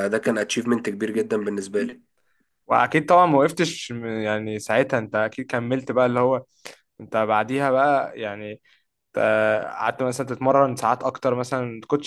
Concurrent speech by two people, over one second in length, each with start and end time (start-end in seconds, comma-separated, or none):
none